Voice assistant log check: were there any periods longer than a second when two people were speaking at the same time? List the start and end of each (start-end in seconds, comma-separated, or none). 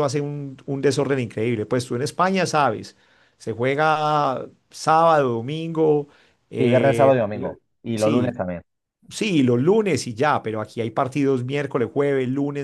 none